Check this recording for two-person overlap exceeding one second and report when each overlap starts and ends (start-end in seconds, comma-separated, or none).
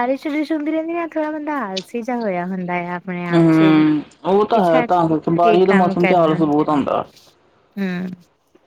4.5-6.4